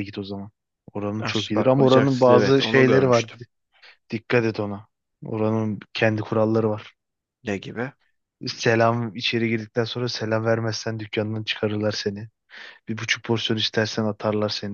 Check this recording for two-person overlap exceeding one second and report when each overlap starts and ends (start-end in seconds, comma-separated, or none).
1.2-3.2